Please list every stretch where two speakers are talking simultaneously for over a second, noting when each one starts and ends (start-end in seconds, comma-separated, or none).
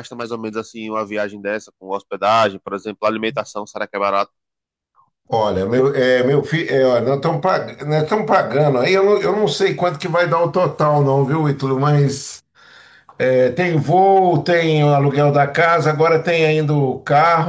none